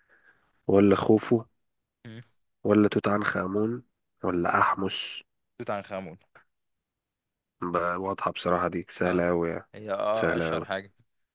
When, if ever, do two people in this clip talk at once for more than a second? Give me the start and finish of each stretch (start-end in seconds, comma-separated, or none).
none